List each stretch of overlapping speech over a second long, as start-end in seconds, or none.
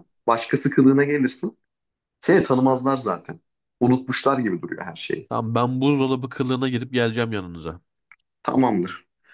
none